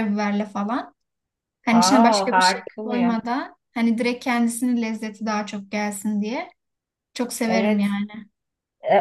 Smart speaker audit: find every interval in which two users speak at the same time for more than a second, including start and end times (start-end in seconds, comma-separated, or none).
1.7-3.1